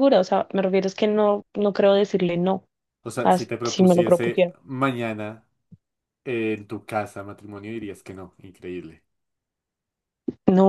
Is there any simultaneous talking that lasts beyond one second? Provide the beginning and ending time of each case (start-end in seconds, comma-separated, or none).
3.2-4.5